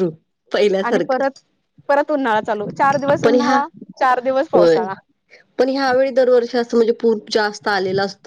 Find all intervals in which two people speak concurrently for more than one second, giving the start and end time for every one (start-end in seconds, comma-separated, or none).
none